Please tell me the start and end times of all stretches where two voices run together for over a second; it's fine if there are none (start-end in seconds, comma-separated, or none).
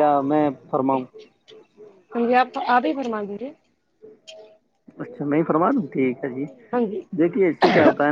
none